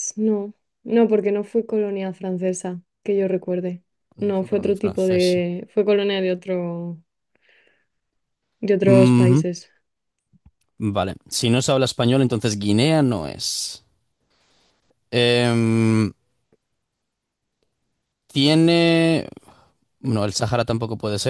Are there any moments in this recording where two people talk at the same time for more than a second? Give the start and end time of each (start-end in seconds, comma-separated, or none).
4.2-5.5